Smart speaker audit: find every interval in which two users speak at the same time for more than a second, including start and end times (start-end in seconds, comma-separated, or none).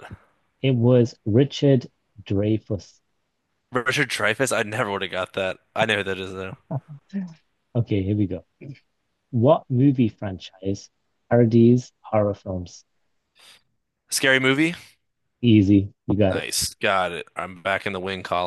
none